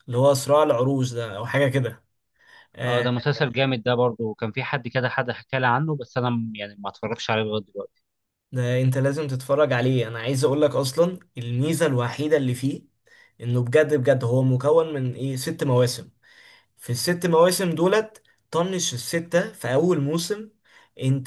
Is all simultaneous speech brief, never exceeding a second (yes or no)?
yes